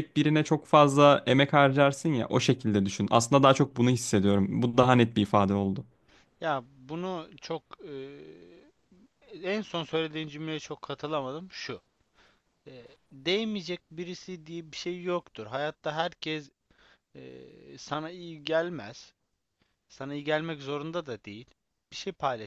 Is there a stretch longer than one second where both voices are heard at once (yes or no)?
no